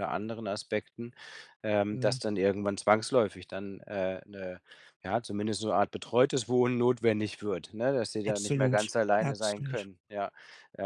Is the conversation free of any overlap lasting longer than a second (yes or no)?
no